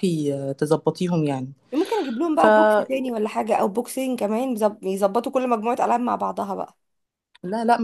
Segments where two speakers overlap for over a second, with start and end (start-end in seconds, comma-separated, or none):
none